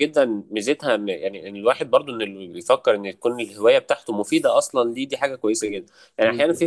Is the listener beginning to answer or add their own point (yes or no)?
no